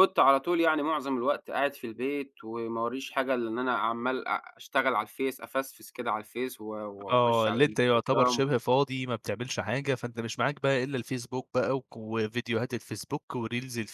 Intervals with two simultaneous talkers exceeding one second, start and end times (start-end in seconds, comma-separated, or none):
7.1-8.4